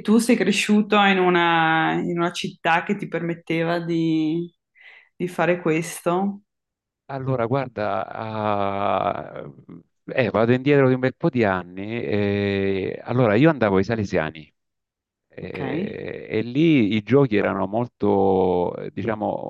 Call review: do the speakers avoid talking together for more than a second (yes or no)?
yes